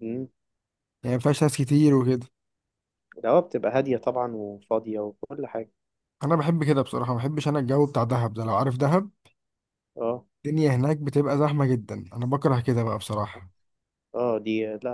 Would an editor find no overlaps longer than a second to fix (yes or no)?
yes